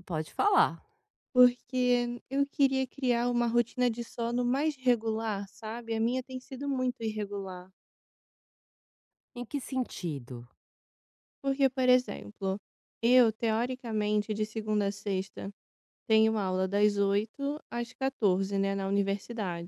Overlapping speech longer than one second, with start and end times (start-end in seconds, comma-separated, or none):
none